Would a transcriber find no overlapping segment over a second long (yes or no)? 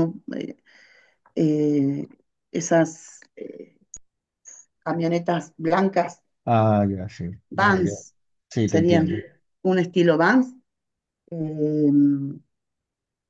yes